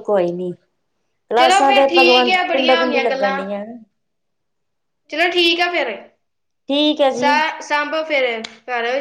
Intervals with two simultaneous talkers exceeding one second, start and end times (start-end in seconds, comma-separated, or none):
1.4-3.4